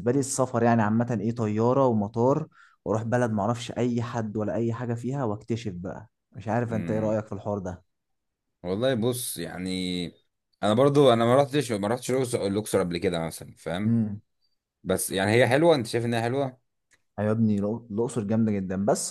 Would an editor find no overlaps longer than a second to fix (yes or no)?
yes